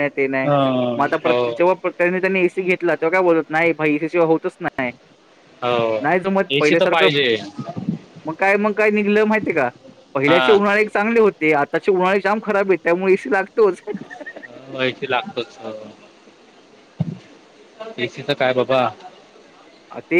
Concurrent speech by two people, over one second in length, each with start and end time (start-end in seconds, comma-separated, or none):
none